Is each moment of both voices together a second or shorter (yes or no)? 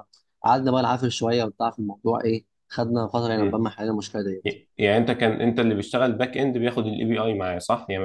yes